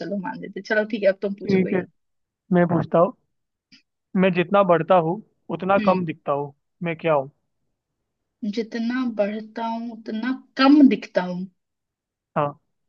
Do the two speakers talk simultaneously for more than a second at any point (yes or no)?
no